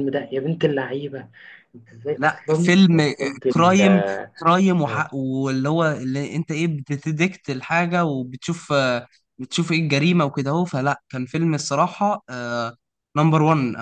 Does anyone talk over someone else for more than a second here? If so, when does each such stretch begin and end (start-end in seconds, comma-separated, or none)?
2.2-4.0